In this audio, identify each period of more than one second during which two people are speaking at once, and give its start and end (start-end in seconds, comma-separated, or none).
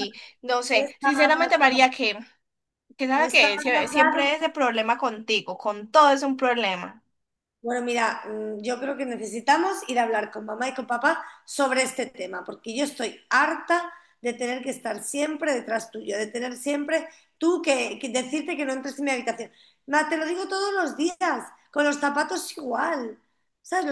0.7-1.9, 3.1-4.4